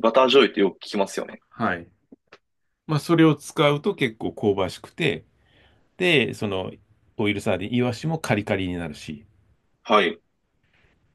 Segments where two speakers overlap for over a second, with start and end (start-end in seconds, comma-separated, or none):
none